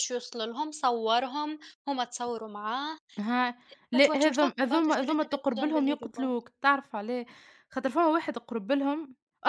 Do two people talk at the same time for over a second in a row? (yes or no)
yes